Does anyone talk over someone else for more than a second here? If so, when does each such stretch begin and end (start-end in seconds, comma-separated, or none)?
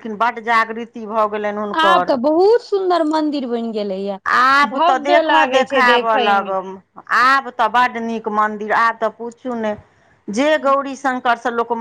4.7-6.5